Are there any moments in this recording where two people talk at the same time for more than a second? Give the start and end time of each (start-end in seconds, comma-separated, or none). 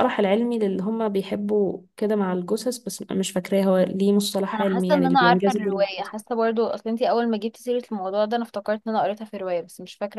4.5-6.1